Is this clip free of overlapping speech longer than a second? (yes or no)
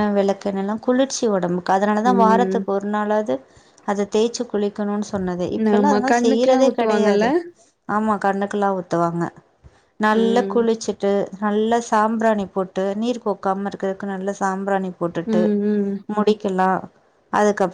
no